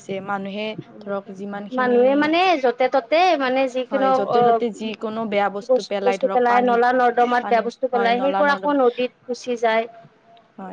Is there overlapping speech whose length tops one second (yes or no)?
yes